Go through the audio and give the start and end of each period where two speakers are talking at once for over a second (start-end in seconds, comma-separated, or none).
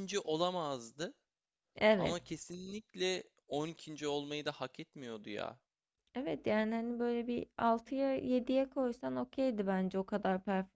none